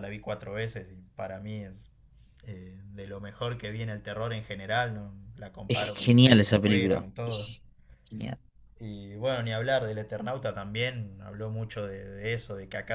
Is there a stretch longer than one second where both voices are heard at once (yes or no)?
yes